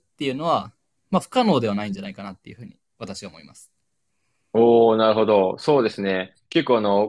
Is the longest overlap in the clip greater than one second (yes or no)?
no